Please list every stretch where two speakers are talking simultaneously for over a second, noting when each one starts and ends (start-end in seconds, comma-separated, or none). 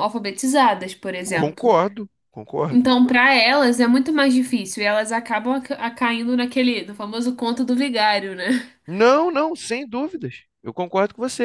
none